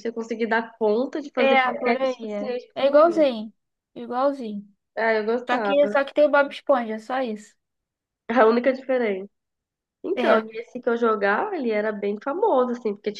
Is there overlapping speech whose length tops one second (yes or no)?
yes